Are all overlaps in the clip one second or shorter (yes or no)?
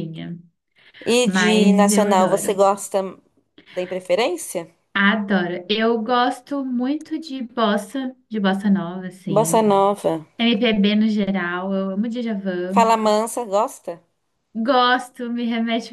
no